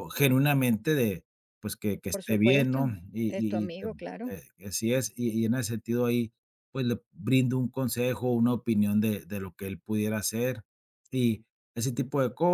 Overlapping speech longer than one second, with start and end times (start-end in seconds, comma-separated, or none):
2.1-4.3